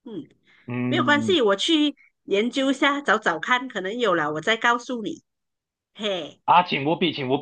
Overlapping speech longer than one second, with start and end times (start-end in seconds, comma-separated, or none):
none